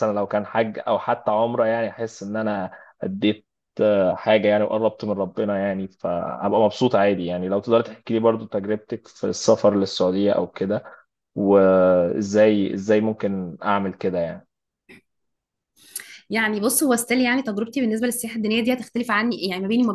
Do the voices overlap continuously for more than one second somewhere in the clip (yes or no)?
no